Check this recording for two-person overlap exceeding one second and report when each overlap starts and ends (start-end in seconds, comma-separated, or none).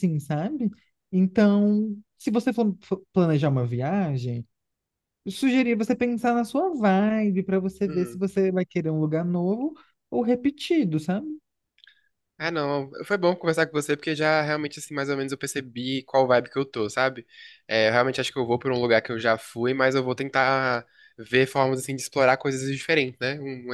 none